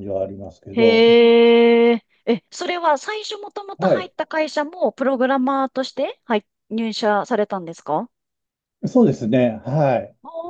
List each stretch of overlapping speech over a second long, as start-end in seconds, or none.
none